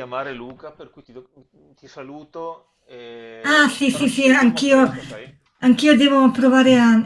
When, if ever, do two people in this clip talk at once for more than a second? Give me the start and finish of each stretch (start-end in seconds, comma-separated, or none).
3.4-5.2